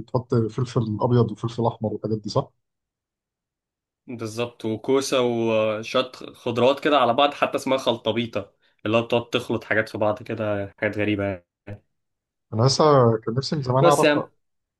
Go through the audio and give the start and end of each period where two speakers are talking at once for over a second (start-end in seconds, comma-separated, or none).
none